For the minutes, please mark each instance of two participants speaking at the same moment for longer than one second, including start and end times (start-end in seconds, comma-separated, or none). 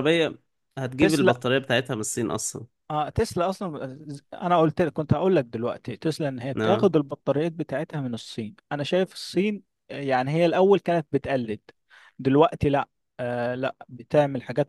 none